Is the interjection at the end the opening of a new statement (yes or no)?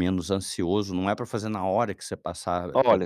yes